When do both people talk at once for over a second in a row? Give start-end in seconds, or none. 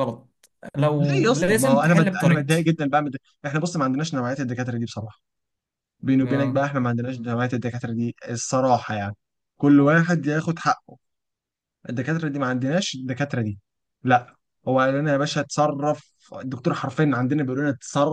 1.0-2.7